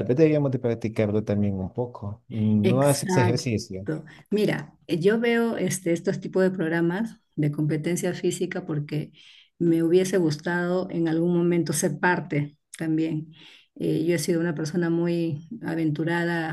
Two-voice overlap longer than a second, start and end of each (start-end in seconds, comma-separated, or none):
2.6-3.9